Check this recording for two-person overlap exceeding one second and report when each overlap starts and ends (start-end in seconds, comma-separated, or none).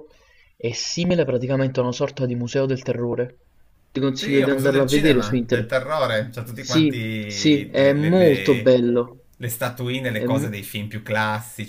4.2-5.8, 6.5-8.7